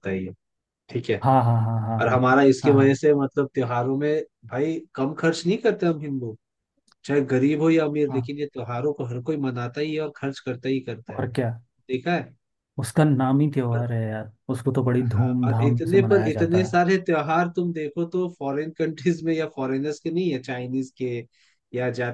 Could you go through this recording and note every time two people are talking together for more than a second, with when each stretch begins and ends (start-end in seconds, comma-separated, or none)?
15.0-16.8